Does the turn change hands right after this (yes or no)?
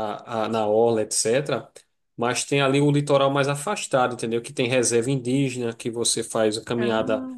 no